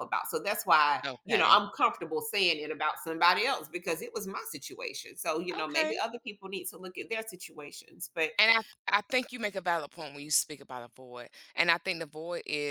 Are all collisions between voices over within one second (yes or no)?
yes